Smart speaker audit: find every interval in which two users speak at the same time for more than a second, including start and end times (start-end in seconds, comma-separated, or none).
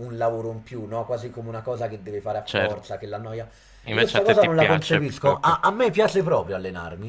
3.9-5.6